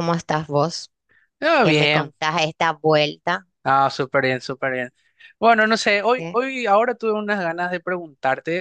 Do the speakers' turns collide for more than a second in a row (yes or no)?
no